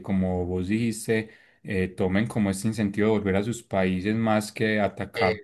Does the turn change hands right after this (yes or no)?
no